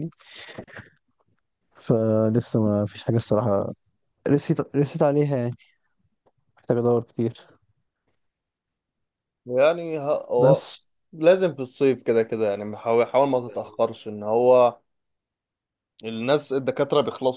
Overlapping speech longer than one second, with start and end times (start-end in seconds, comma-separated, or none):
none